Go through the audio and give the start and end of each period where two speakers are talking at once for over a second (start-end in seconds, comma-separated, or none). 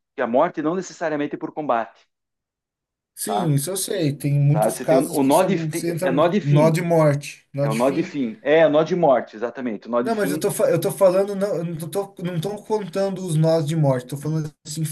4.5-6.8